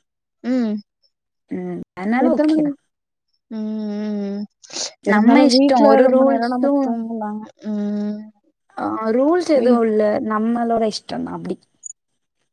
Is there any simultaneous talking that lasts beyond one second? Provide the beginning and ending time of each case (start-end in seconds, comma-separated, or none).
5.1-6.9